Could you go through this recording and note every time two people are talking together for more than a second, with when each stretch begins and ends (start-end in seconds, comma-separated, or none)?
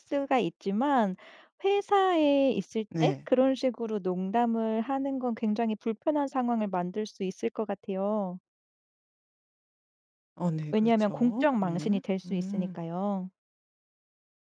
10.7-12.8